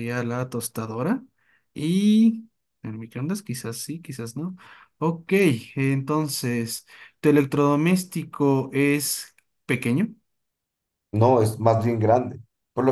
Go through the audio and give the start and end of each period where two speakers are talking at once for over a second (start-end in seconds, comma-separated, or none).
none